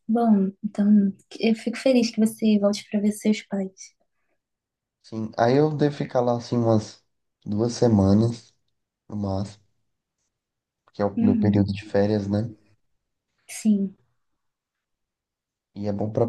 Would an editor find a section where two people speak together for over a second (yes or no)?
no